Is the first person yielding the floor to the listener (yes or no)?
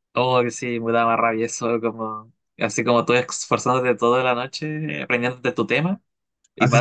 yes